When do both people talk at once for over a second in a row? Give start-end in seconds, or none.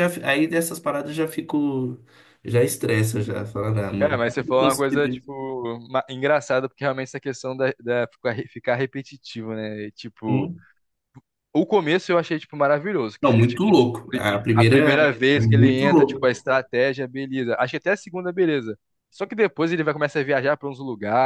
4.0-5.3, 13.2-16.3